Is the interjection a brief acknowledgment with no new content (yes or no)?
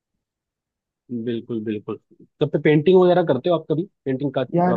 no